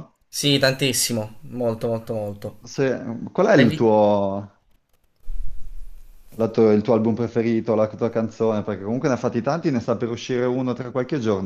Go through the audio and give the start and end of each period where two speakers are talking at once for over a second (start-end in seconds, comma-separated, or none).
none